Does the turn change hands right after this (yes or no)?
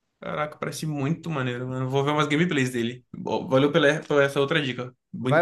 yes